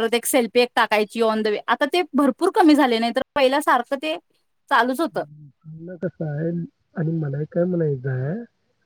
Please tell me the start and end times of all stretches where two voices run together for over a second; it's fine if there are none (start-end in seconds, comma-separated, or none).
none